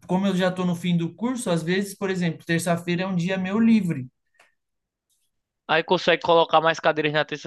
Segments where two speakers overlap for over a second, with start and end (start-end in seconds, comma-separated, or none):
none